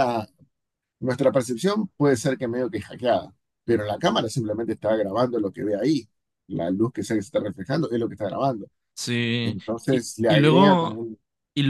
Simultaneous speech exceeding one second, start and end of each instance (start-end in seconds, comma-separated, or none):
9.4-11.0